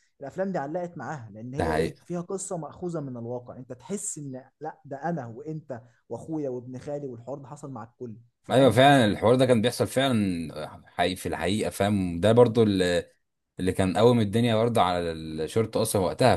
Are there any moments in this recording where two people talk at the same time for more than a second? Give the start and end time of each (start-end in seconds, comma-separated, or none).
none